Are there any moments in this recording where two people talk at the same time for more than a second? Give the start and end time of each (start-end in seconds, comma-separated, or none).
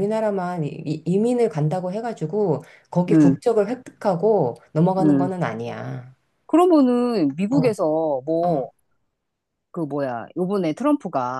none